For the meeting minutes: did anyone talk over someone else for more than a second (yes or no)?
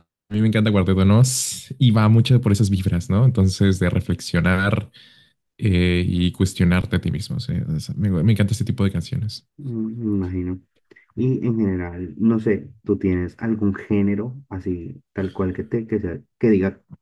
no